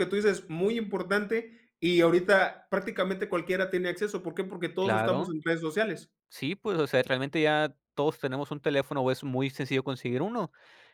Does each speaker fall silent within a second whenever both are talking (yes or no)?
yes